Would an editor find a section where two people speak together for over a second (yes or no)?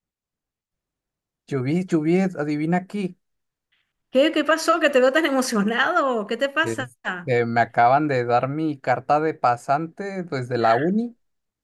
no